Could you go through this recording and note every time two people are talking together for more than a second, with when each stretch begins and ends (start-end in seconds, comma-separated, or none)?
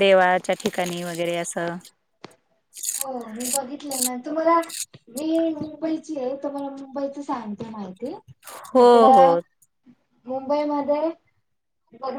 none